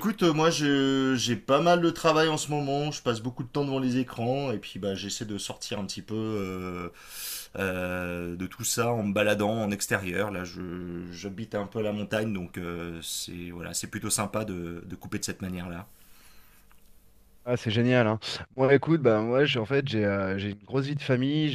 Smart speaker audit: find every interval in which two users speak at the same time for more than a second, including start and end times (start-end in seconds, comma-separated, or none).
none